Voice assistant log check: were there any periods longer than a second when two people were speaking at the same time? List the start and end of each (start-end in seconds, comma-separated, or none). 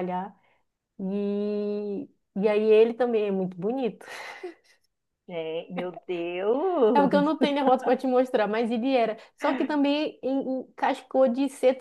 none